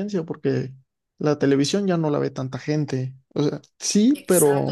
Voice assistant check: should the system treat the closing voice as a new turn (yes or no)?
yes